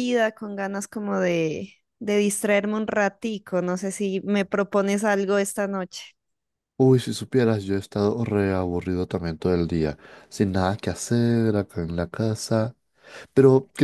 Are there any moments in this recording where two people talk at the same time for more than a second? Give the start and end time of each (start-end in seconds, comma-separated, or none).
none